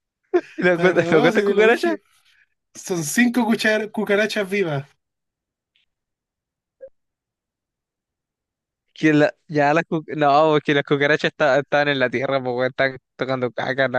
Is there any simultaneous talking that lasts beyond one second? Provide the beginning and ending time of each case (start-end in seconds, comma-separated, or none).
0.7-1.9